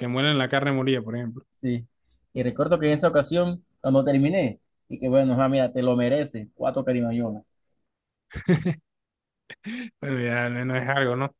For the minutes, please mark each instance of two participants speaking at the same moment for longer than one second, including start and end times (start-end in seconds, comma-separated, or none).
none